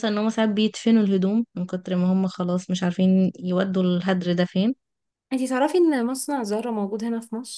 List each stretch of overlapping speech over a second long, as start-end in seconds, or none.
none